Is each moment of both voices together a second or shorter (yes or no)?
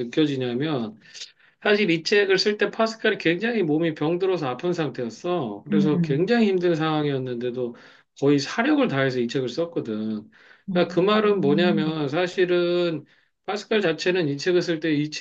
no